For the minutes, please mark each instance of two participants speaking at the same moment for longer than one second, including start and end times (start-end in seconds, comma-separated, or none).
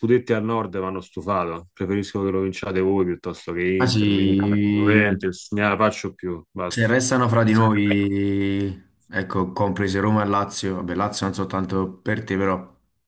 3.8-5.1